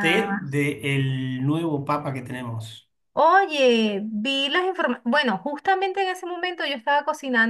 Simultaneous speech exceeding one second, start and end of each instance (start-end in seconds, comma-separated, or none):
none